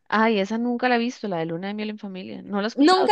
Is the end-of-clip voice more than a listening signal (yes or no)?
yes